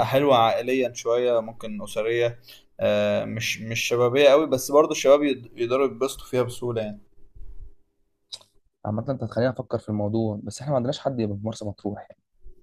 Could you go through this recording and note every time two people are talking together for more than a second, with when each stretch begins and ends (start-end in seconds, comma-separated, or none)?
none